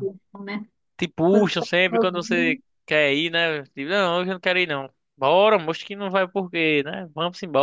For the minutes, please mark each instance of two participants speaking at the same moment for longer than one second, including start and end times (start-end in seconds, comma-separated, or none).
1.3-2.6